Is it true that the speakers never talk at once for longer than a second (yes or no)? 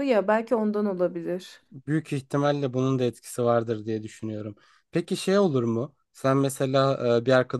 yes